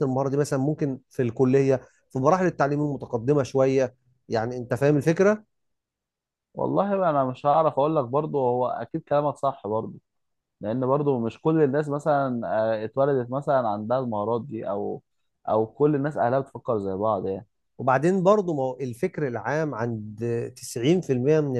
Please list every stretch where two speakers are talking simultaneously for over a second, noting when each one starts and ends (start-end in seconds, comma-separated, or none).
none